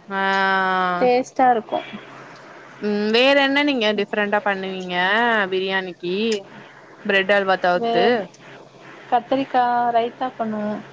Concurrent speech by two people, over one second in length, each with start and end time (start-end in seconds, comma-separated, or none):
none